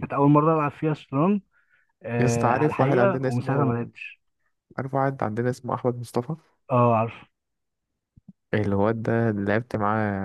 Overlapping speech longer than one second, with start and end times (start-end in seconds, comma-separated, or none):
2.2-3.9